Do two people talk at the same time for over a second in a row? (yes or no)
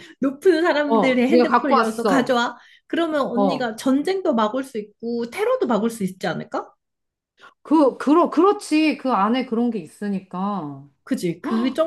yes